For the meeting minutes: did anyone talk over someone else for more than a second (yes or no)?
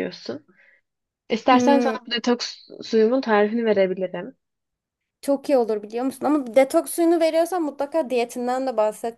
no